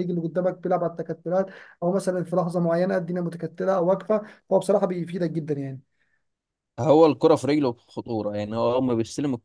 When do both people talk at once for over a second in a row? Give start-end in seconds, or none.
none